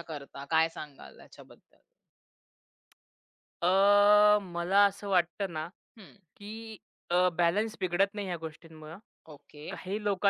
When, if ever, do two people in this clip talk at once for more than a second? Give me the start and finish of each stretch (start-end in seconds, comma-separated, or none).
none